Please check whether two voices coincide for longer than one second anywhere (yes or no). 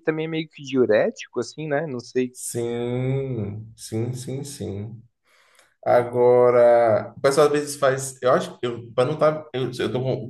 no